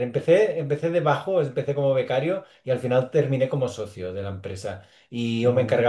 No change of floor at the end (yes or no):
yes